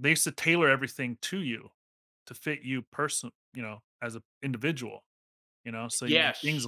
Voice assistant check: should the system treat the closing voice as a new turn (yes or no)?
no